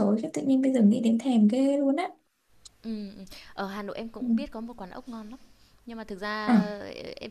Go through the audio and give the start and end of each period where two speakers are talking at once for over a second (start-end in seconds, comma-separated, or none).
none